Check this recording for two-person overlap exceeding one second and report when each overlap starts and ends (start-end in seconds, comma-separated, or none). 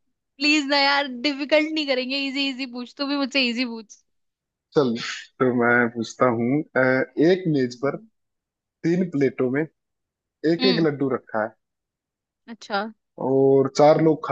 none